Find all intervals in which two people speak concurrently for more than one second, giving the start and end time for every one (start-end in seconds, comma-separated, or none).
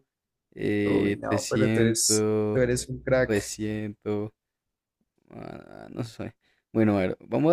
0.8-2.6